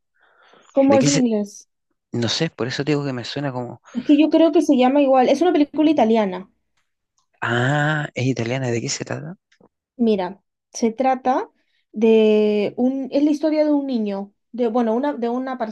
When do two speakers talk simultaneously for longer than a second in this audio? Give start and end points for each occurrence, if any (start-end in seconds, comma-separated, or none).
none